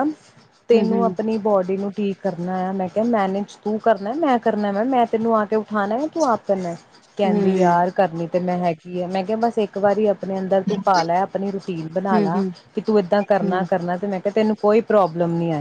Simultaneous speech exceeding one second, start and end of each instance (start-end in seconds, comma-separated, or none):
none